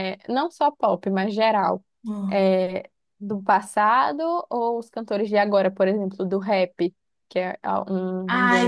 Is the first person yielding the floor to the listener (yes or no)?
yes